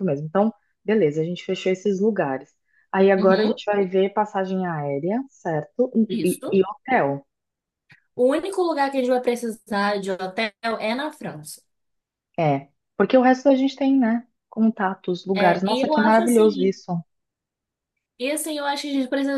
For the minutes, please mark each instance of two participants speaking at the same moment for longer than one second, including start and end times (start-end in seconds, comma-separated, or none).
15.3-16.8